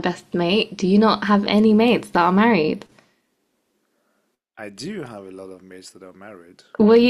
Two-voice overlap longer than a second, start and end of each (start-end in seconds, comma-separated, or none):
none